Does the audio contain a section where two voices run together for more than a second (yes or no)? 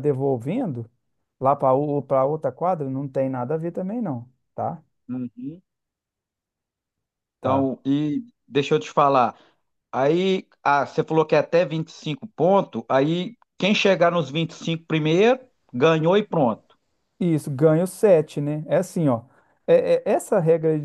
no